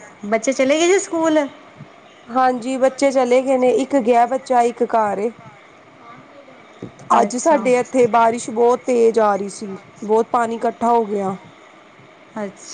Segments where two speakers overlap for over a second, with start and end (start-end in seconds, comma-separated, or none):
none